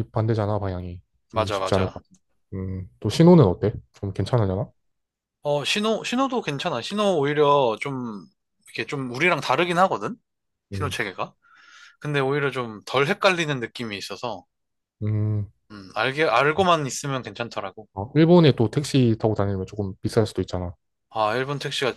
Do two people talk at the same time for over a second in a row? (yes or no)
no